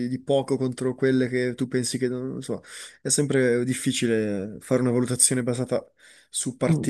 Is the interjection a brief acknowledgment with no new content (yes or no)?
no